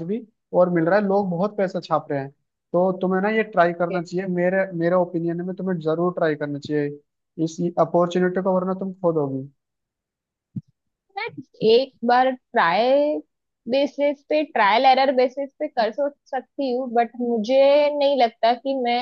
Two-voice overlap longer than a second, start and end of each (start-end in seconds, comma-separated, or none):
none